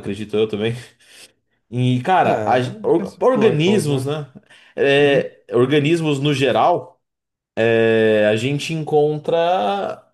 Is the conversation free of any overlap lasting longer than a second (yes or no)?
no